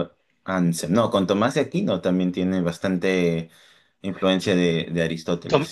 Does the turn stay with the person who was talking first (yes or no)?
no